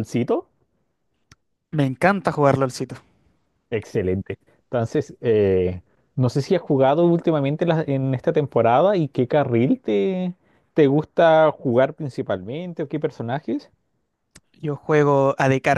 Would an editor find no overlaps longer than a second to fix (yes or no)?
yes